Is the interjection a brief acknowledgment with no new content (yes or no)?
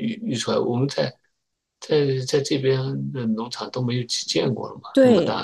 no